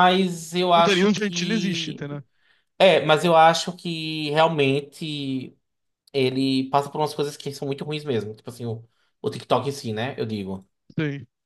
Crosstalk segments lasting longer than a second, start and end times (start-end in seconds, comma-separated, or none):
0.7-2.1